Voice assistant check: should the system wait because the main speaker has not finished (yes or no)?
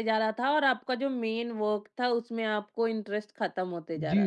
no